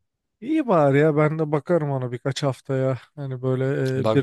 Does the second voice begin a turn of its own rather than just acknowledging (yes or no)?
no